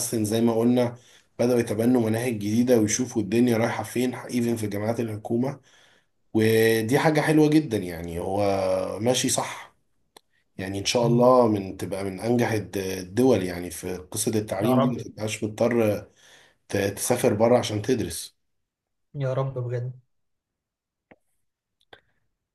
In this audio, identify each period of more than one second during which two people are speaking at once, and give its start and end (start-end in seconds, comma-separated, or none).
none